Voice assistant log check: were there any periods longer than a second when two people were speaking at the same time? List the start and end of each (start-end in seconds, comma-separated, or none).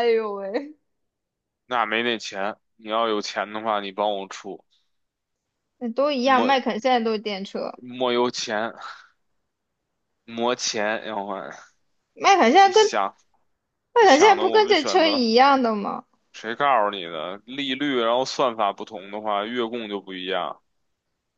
14.0-15.2